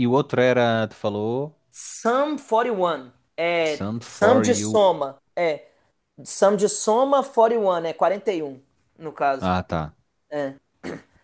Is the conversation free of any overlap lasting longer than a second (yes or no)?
no